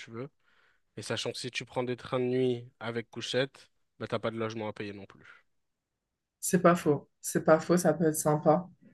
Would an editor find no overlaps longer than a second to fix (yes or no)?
yes